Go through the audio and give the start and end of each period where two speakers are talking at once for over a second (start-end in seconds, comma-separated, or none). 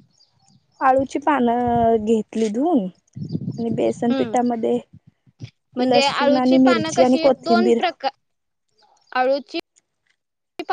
5.9-7.8